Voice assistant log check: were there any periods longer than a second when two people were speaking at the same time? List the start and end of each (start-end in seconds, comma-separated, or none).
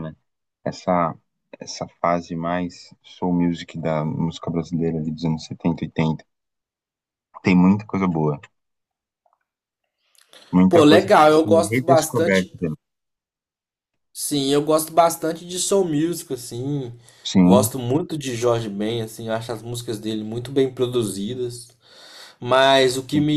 10.7-12.6